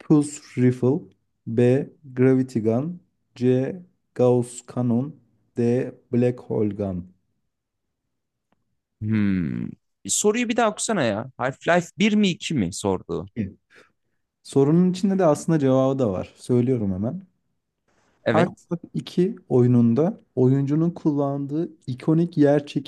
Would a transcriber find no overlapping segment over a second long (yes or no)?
yes